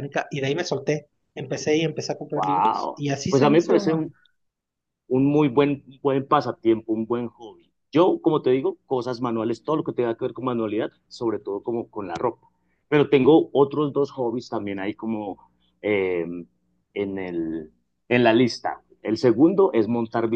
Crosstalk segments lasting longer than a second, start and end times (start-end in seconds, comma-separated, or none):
2.3-3.9